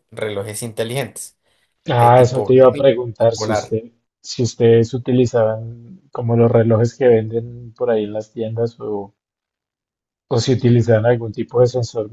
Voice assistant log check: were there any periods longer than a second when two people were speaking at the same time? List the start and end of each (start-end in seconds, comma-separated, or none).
1.9-3.8